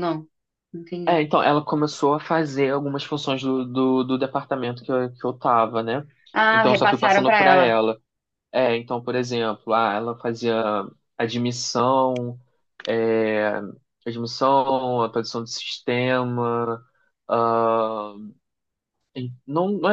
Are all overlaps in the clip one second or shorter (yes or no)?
no